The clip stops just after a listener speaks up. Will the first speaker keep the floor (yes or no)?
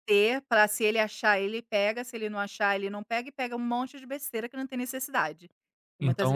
no